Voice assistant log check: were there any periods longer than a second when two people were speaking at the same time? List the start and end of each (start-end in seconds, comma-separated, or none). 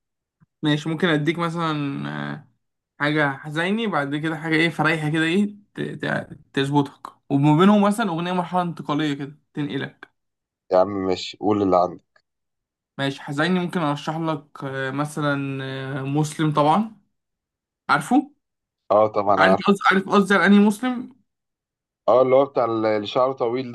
none